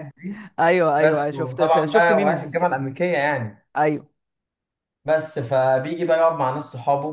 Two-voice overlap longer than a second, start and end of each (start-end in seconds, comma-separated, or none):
1.0-2.7